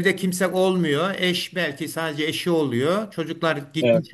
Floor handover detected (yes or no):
no